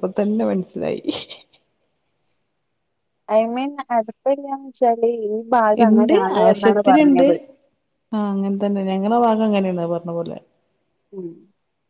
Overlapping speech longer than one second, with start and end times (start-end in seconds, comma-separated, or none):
none